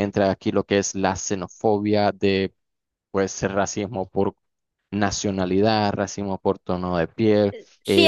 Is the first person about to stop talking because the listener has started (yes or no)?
yes